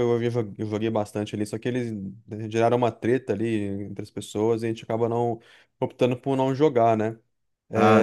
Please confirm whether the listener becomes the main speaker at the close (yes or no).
no